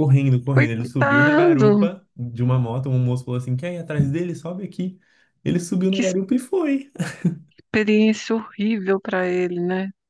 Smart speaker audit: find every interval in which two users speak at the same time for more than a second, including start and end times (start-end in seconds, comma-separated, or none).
0.5-1.9